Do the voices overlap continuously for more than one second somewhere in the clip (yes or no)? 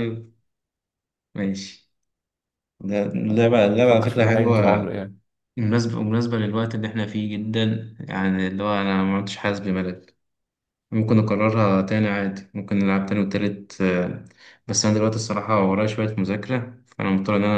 yes